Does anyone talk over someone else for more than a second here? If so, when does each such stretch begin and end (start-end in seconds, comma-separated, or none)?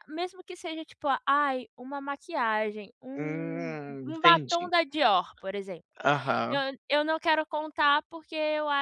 3.1-4.7